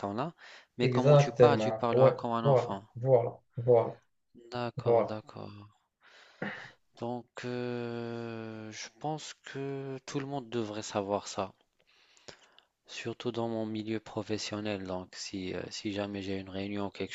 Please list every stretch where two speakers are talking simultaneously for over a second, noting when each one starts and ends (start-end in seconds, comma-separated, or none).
0.8-2.8